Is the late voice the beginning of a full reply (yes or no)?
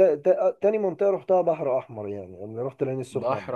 yes